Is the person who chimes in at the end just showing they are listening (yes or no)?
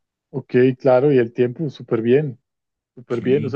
yes